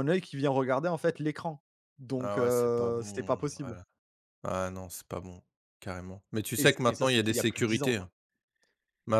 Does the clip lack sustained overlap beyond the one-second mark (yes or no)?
no